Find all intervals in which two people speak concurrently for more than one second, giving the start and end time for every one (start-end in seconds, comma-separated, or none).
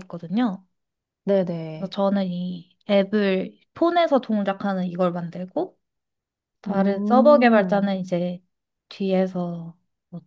6.7-7.9